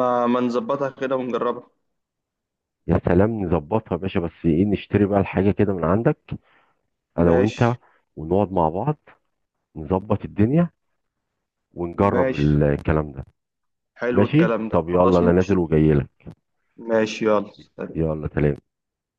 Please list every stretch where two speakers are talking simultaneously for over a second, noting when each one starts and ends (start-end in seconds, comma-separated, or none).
14.1-15.6